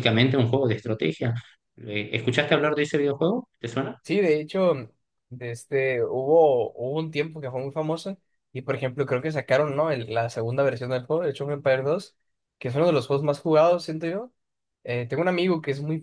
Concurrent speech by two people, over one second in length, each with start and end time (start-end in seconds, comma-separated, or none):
none